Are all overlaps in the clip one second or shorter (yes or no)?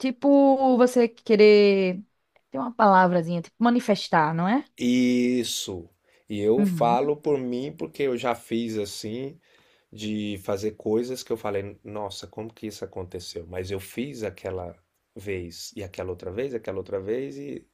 yes